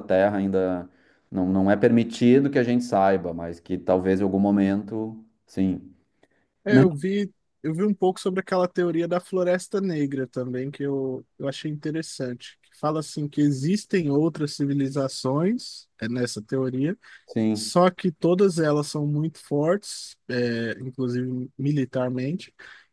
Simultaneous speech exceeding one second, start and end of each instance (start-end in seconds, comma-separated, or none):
none